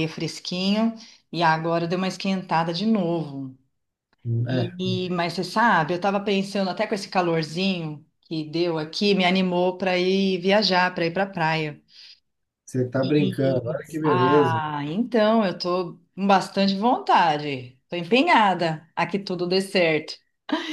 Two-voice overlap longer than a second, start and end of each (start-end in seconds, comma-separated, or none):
13.2-14.6